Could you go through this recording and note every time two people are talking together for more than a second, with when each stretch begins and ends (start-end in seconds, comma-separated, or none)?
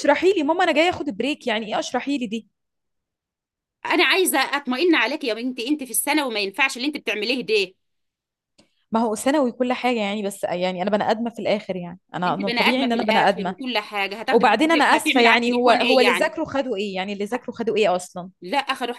12.2-13.6, 14.3-16.4